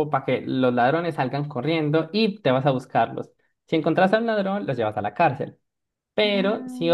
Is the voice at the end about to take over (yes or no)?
no